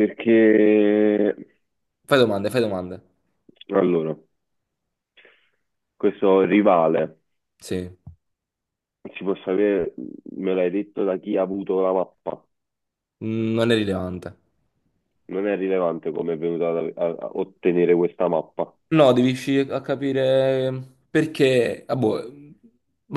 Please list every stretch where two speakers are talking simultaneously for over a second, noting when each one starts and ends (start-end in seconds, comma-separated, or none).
none